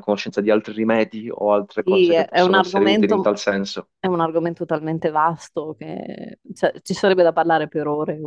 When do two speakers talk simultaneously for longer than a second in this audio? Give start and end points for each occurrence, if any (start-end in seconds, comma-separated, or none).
1.8-3.3